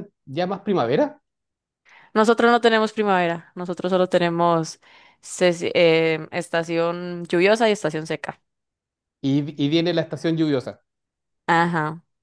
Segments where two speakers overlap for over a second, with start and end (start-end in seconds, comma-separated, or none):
none